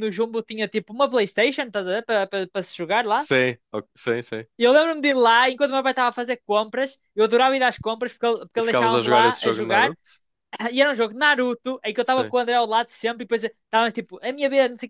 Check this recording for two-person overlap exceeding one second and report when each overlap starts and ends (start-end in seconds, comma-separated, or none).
8.6-10.0